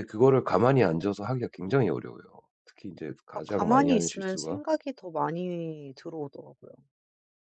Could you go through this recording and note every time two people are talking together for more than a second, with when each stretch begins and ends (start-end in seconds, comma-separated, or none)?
3.3-4.6